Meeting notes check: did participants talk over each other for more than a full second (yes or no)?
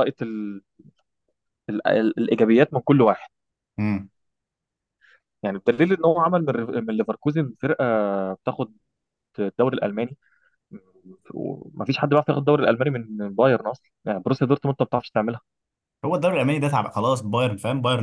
no